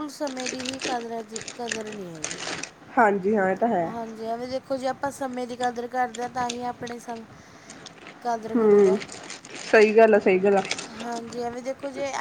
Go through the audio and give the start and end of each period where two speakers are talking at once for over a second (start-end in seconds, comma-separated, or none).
none